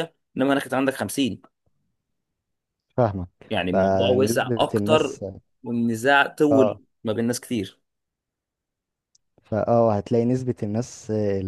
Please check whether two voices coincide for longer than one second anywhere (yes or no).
yes